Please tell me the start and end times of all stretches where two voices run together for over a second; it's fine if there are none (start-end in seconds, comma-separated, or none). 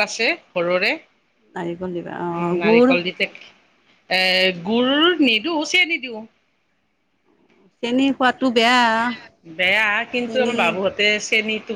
1.6-2.9